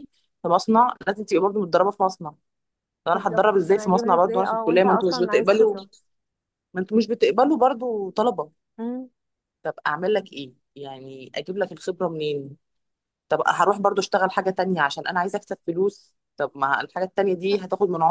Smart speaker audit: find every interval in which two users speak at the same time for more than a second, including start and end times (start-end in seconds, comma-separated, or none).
3.1-5.8